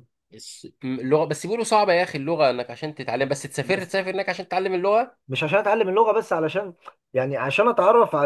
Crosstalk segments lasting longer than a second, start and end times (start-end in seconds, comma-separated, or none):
none